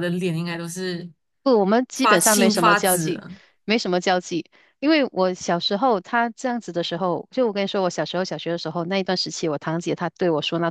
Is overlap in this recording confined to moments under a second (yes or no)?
no